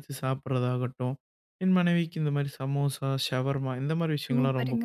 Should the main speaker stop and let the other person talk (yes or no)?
yes